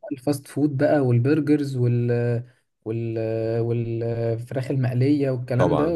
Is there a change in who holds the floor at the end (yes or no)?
yes